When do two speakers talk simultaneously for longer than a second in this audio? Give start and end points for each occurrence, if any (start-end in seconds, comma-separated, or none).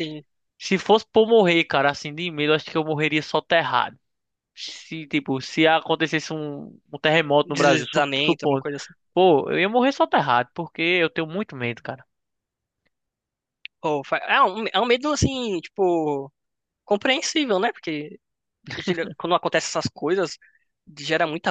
7.4-8.6